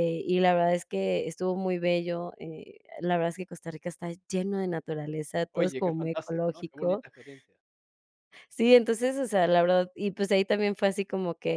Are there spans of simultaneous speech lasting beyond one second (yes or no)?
yes